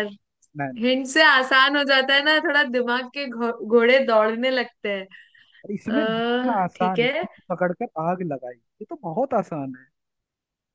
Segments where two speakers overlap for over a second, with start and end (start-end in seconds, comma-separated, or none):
5.9-7.3